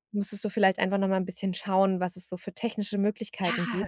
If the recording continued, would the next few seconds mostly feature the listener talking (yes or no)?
yes